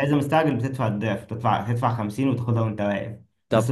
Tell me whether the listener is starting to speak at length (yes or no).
no